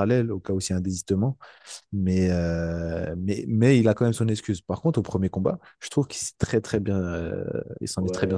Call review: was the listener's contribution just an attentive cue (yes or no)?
no